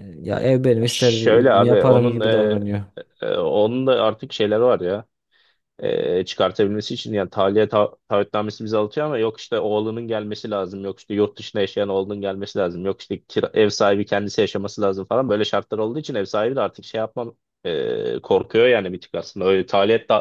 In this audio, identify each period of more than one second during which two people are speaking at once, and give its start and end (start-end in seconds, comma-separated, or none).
0.8-2.6